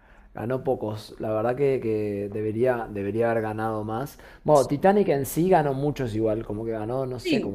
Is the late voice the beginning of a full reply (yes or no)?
yes